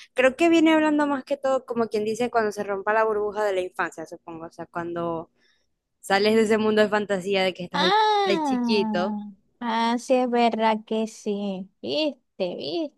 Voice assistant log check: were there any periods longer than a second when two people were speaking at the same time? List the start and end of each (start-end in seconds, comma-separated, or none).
7.7-9.1